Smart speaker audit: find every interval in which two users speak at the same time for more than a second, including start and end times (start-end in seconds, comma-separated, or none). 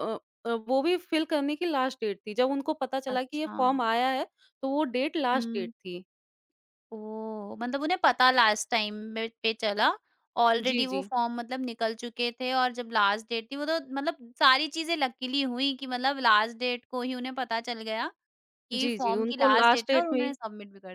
18.7-20.3